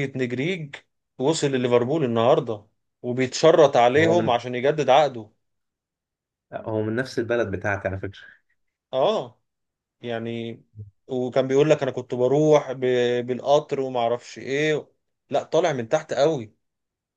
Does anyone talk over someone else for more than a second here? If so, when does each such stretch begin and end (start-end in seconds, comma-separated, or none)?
none